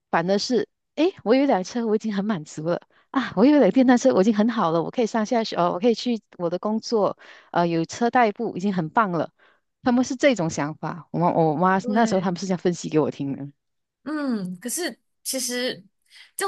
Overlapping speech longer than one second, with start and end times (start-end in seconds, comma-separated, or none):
none